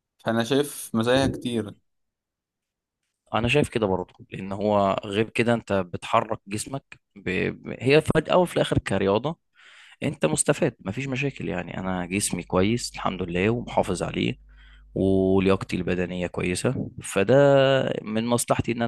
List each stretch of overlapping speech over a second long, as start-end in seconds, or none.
none